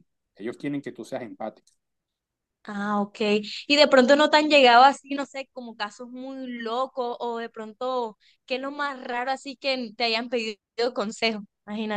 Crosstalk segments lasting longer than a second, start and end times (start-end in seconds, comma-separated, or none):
none